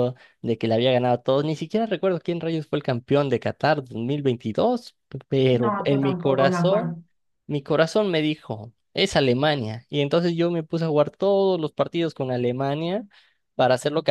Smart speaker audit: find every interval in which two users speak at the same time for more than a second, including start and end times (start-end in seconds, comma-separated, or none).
5.5-7.0